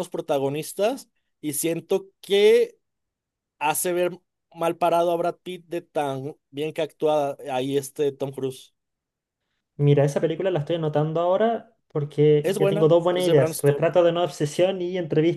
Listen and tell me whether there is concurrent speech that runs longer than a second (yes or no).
yes